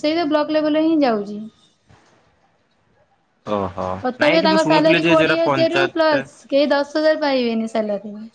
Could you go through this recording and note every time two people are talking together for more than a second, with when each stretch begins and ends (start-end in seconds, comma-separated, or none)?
4.2-6.3